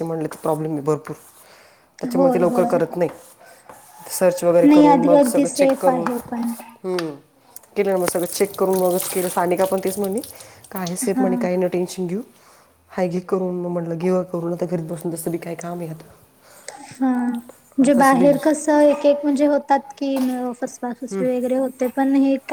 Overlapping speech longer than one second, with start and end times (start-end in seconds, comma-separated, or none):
4.7-6.5